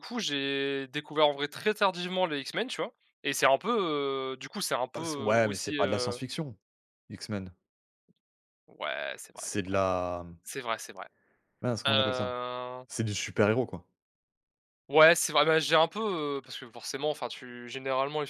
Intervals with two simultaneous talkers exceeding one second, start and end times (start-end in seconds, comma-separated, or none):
4.9-6.2